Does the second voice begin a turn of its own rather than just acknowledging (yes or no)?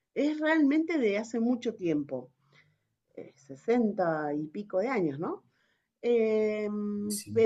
no